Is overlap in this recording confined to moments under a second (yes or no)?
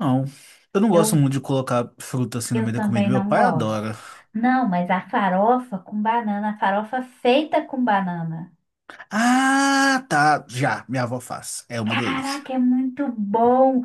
no